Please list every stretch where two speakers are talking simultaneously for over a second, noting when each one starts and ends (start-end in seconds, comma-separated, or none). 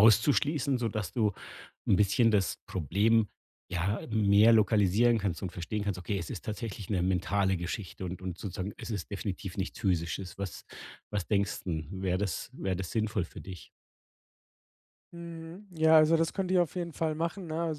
none